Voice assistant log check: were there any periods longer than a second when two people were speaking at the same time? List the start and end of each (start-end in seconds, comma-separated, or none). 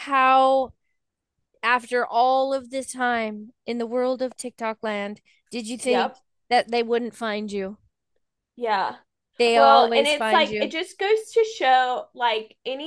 9.5-10.7